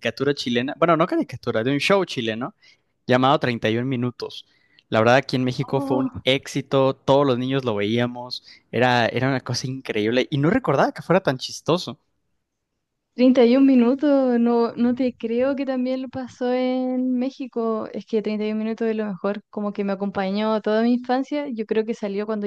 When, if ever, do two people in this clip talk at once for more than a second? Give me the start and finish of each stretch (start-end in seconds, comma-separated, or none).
none